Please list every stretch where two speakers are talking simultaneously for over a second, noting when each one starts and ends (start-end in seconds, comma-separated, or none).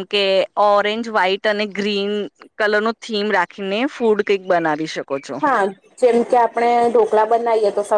none